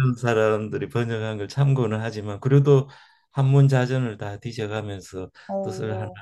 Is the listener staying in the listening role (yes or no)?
yes